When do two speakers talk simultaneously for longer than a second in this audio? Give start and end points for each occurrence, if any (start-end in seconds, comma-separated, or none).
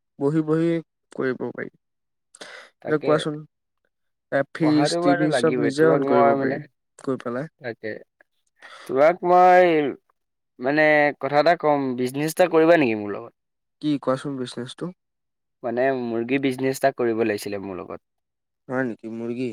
4.6-6.6